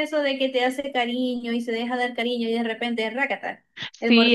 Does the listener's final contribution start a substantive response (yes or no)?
yes